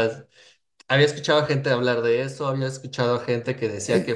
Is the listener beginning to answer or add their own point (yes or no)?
no